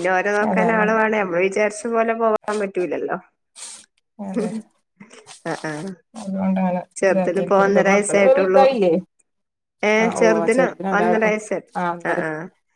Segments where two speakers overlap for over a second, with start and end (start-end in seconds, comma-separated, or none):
7.0-8.6